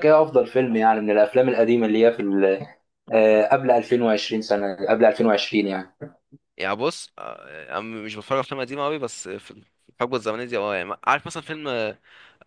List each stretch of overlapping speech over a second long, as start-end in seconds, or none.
none